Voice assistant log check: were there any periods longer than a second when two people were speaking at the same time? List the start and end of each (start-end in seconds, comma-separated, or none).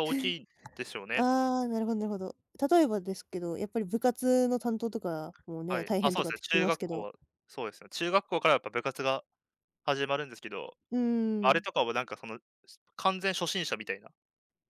5.7-7.1